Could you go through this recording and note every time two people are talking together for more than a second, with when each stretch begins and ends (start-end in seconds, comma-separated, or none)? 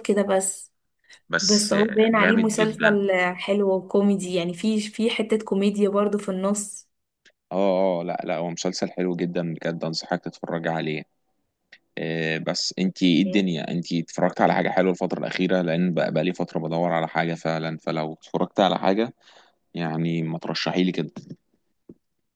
1.4-3.0